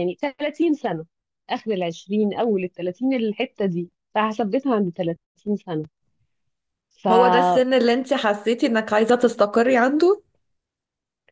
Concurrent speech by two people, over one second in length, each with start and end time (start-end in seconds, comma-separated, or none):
none